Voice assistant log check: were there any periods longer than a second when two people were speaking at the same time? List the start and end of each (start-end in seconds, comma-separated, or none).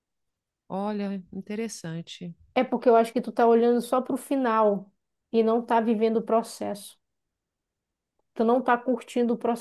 none